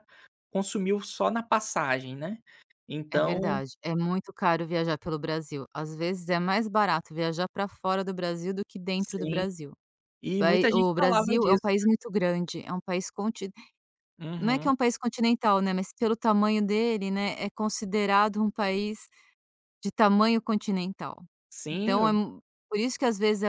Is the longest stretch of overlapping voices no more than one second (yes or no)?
no